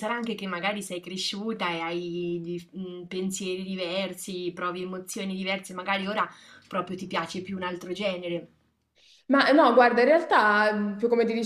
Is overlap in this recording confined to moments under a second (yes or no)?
yes